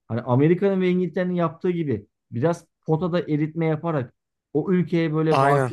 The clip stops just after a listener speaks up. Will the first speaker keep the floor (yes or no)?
yes